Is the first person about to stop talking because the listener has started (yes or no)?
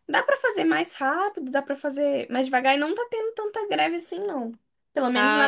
yes